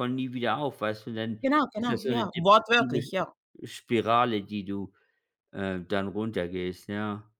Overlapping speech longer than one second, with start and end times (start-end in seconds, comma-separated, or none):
1.4-3.1